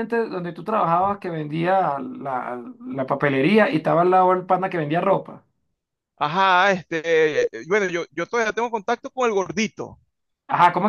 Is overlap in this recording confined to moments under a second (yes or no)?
yes